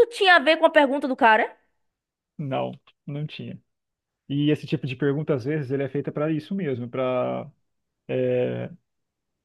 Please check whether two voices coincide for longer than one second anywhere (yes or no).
no